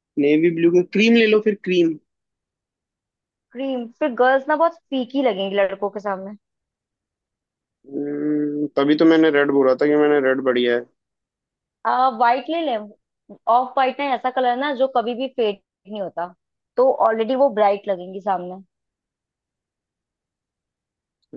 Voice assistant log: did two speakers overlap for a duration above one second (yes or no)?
no